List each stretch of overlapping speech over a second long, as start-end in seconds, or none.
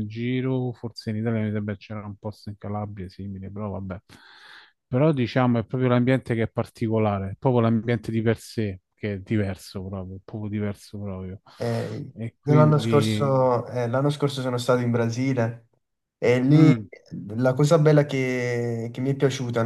12.1-13.5